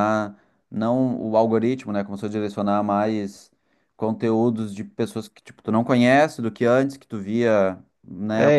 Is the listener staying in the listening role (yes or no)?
no